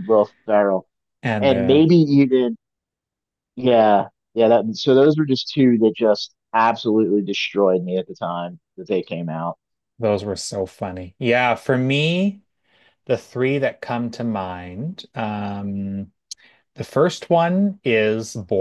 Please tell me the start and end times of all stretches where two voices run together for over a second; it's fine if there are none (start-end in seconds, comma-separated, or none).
none